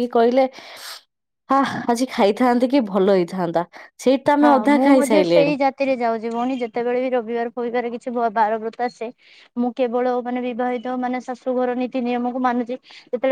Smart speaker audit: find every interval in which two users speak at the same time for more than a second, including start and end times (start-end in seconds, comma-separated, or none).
none